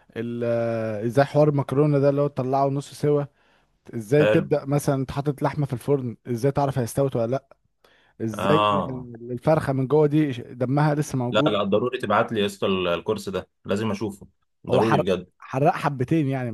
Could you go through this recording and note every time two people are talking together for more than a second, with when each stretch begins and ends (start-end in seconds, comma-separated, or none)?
none